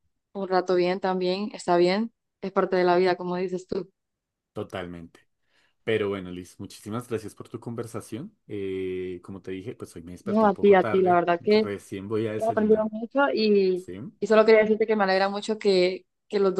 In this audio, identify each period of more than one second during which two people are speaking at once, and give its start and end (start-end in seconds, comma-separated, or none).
10.2-11.7